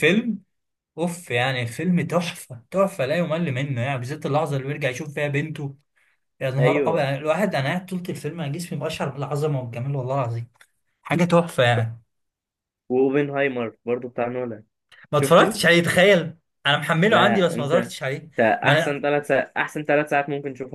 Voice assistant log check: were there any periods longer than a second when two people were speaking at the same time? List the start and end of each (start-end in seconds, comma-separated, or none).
17.1-19.0